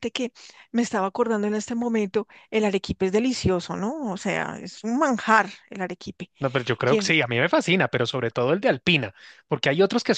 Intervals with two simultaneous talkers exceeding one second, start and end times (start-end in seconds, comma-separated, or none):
none